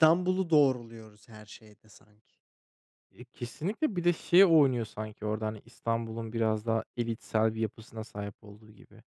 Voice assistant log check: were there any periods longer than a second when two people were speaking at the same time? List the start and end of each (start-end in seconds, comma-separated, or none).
none